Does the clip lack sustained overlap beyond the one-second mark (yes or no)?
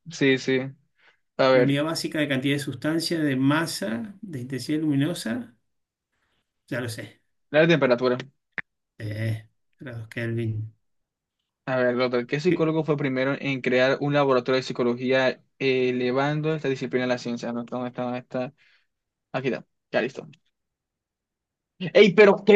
yes